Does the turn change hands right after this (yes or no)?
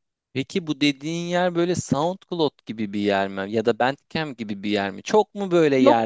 no